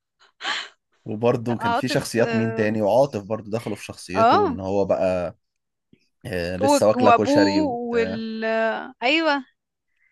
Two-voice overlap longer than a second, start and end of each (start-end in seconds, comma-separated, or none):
1.4-2.7, 6.6-8.2